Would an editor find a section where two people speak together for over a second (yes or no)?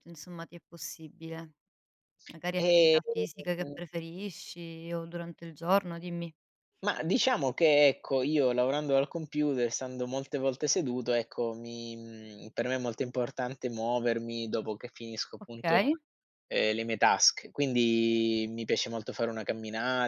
no